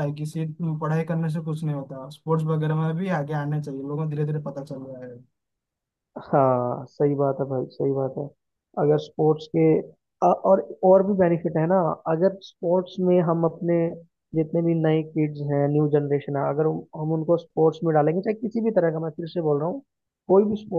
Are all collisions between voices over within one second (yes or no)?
yes